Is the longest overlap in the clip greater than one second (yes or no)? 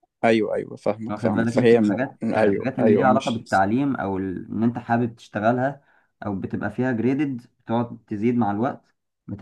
yes